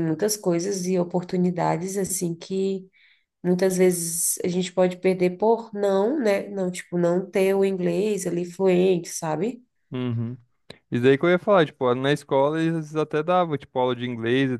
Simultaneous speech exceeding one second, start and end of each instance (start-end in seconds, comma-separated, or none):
none